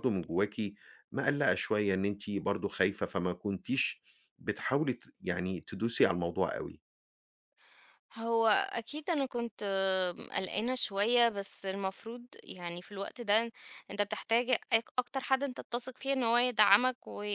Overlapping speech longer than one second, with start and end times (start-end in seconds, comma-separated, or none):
none